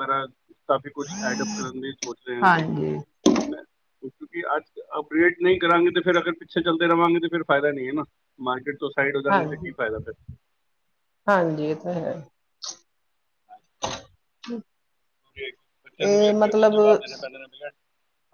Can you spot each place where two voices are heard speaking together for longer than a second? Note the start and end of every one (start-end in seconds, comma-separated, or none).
none